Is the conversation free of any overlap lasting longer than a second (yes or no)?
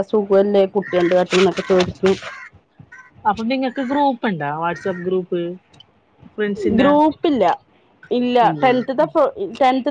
yes